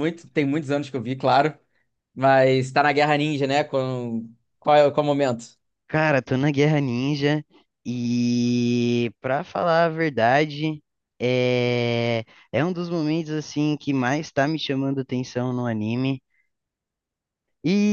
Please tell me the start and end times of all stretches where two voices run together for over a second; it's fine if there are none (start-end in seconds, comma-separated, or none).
none